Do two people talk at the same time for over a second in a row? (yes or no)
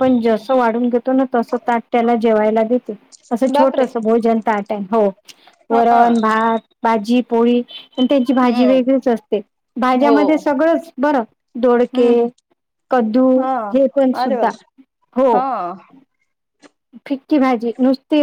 no